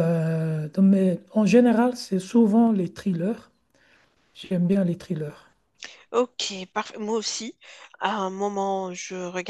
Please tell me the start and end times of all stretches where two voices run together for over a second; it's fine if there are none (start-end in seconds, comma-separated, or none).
none